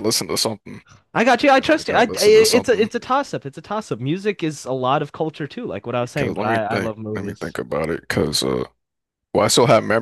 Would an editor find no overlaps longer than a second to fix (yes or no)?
no